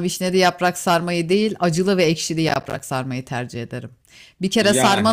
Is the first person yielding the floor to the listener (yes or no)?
no